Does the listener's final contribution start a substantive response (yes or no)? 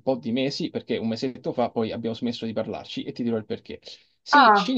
no